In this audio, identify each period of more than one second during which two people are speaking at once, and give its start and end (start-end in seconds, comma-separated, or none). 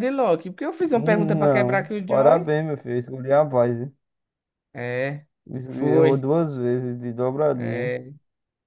0.9-2.5